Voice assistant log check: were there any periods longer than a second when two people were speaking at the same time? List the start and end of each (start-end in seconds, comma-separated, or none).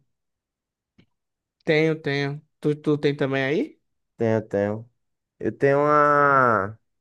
none